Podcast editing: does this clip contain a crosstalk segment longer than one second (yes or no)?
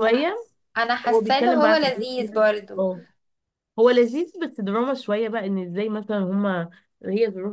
yes